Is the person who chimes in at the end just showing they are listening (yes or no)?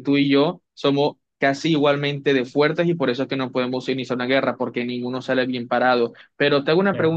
yes